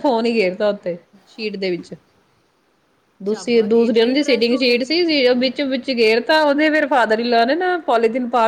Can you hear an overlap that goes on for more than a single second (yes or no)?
yes